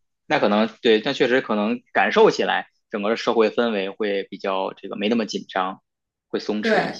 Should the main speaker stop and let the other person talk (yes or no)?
yes